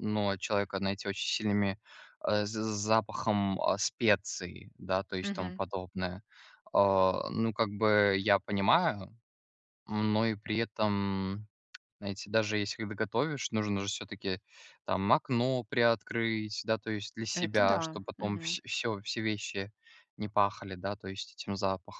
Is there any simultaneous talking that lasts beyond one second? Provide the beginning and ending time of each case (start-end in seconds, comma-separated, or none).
17.3-18.6